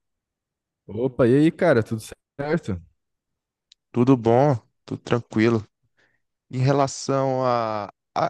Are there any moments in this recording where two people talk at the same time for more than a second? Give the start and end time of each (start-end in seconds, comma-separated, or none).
none